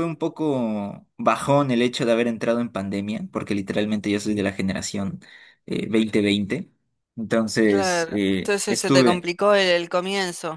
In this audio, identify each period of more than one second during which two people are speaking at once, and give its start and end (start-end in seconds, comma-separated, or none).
7.6-9.3